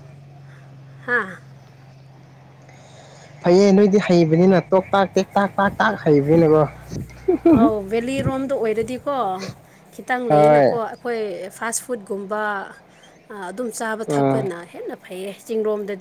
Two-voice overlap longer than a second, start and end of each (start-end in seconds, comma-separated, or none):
none